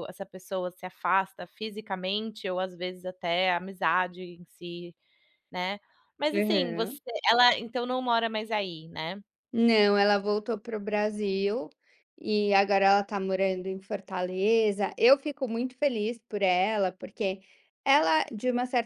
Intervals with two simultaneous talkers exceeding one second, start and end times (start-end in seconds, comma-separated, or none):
none